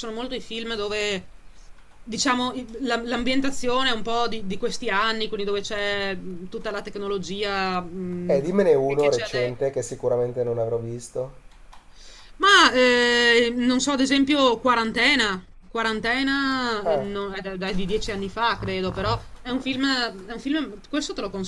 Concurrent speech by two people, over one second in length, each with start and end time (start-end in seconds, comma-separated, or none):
8.3-9.7